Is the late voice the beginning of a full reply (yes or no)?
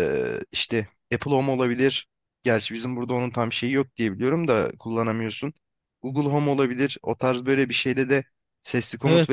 no